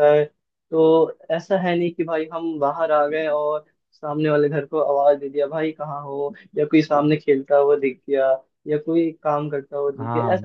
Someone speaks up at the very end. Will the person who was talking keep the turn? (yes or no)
yes